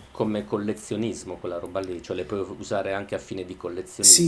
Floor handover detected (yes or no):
yes